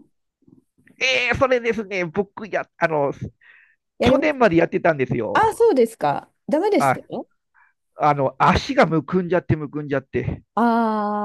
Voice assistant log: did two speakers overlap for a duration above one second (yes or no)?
no